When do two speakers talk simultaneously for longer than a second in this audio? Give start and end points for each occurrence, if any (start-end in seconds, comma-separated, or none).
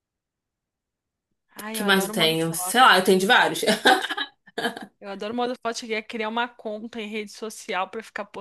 1.6-3.0